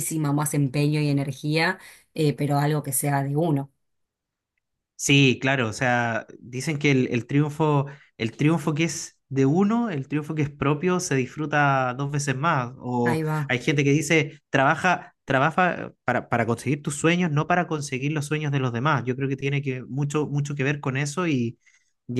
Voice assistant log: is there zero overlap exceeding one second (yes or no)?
yes